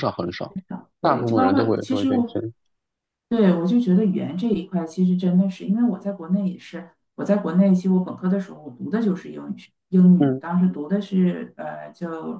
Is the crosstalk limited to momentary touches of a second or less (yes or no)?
no